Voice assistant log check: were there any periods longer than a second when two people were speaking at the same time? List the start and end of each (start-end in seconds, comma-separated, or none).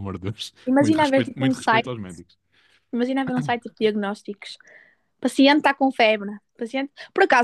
0.7-1.9